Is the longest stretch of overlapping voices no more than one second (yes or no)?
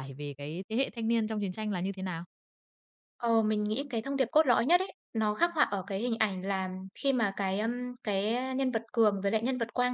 yes